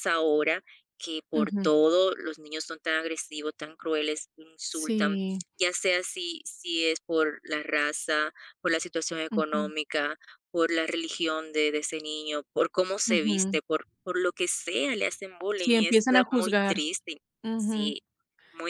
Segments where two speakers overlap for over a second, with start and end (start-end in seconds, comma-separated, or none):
15.6-16.8